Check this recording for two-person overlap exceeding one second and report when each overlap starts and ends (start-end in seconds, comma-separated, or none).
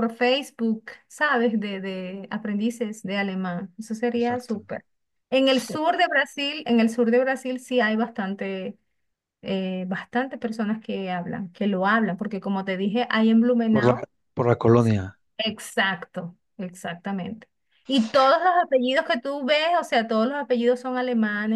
none